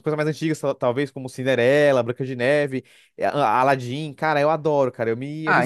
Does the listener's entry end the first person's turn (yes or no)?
yes